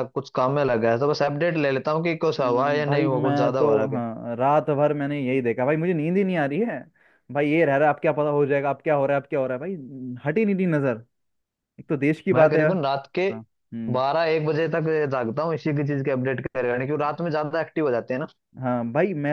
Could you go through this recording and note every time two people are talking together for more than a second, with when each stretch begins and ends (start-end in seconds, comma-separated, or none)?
2.4-4.0